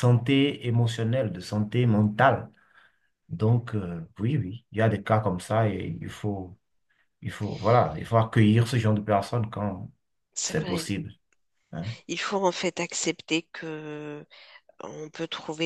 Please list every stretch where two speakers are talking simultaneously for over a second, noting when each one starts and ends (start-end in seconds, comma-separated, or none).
none